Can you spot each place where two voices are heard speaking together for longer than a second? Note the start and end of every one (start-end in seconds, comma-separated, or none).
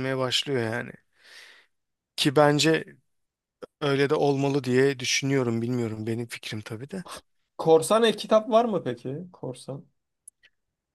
none